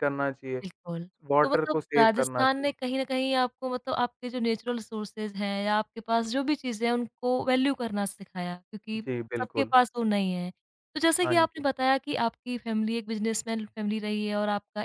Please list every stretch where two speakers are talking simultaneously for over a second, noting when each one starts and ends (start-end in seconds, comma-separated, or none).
1.3-2.7